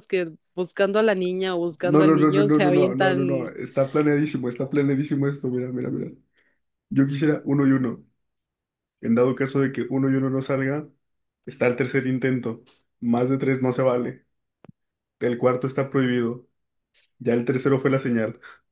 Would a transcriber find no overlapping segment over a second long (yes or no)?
no